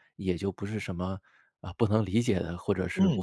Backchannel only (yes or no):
no